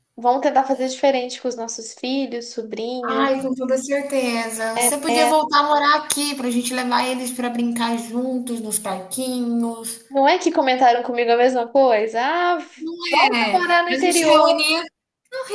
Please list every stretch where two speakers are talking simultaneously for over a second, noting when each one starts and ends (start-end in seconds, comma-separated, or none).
13.3-14.6